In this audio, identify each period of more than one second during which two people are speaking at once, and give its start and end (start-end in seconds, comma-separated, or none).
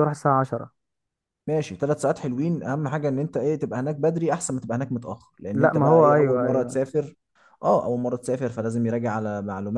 5.5-6.8